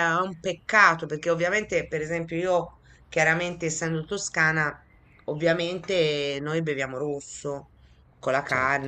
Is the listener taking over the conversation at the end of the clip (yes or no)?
no